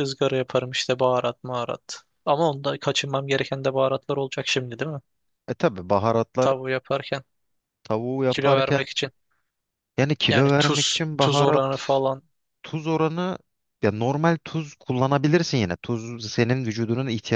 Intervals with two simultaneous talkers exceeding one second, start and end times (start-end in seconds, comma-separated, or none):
10.3-11.6